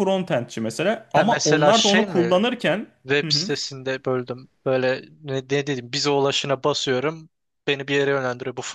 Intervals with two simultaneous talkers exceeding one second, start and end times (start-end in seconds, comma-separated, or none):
1.1-2.3